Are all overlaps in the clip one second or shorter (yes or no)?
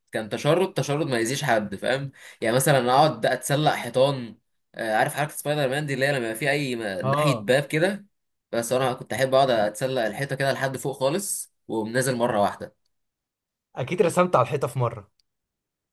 yes